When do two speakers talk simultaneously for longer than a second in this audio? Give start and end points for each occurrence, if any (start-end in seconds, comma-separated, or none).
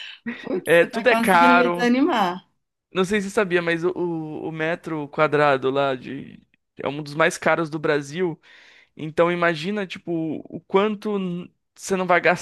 0.6-1.9